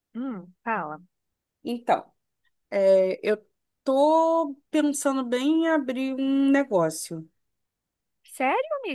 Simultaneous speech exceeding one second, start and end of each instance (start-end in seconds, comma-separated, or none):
none